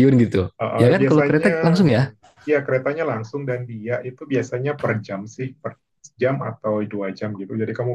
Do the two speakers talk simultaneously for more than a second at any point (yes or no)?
yes